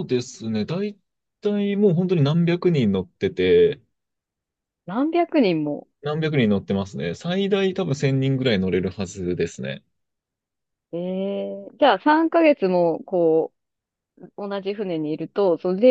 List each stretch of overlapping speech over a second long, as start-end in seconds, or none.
none